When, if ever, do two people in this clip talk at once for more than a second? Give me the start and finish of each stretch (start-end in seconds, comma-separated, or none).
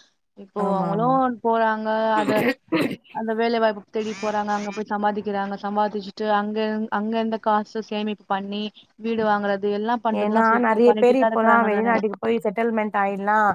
none